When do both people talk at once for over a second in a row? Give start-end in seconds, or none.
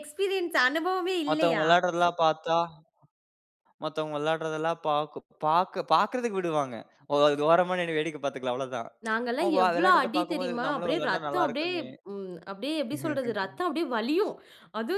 9.4-11.7